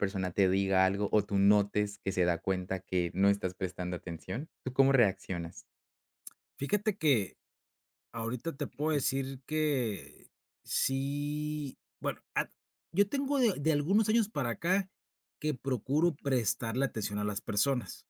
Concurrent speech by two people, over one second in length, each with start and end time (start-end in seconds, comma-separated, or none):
none